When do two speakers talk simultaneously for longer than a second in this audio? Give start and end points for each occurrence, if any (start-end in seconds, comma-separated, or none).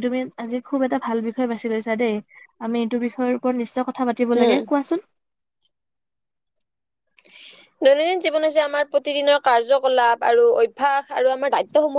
none